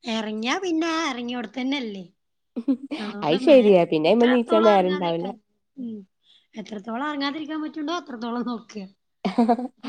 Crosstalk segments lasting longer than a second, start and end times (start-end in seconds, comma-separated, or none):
4.1-5.3